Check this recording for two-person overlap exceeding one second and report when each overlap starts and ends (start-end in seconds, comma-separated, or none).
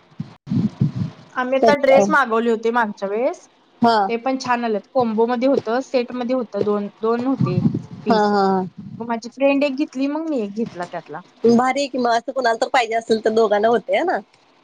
none